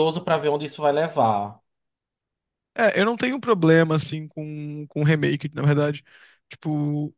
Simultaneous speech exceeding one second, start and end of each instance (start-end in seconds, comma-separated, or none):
none